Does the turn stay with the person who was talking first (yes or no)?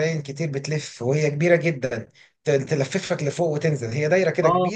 no